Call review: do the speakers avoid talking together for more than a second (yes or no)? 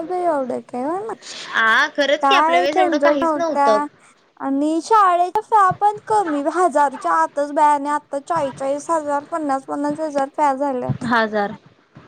no